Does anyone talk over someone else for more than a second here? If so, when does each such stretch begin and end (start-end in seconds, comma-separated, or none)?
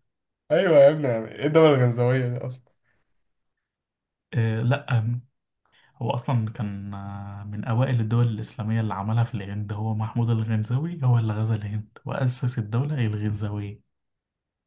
none